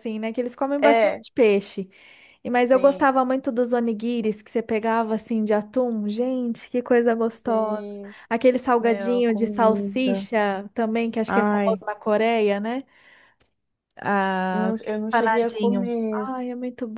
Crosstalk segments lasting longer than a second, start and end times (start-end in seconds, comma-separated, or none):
8.8-10.3, 14.5-16.2